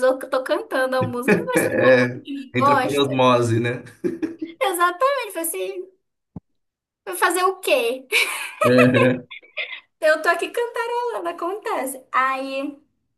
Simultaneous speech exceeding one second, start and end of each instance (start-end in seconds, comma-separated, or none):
1.6-3.2